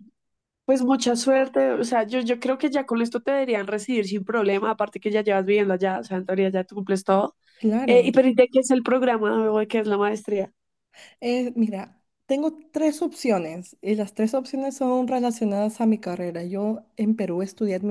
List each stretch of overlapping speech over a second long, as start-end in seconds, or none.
none